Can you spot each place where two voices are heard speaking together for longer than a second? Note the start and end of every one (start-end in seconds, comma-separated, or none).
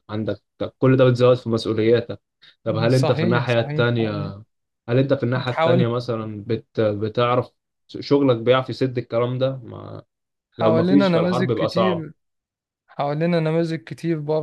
2.9-4.3, 10.6-12.1